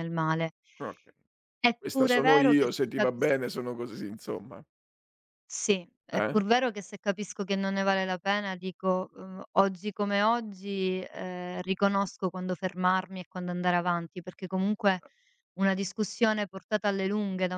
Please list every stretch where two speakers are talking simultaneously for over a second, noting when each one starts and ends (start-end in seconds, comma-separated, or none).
1.8-3.4